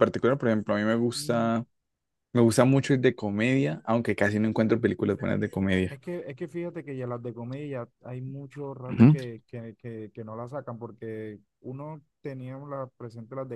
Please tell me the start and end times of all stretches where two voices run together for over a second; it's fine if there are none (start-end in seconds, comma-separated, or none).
none